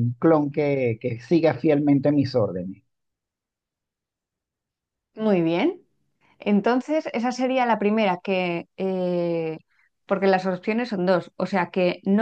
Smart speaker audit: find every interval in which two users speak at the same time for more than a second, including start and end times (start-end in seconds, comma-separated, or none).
none